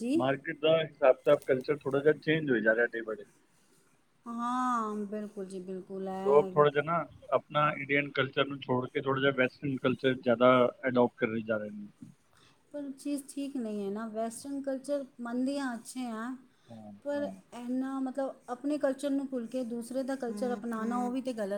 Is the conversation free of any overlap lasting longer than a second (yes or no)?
yes